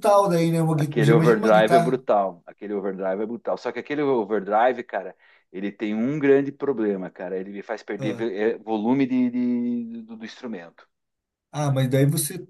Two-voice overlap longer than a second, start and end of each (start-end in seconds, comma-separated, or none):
0.8-2.0